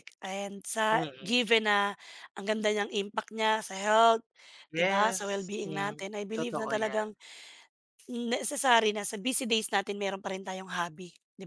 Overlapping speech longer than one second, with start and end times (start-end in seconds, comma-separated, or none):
4.8-7.1